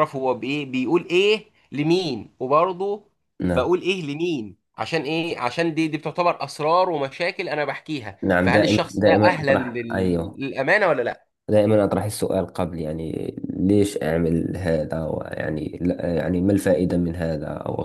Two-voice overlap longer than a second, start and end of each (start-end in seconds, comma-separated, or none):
8.2-10.4